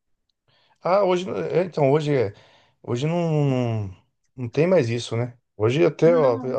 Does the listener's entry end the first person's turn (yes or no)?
no